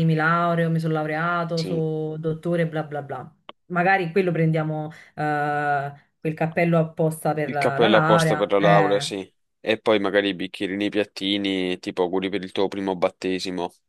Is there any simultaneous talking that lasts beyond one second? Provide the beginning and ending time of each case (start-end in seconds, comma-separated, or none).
7.4-9.1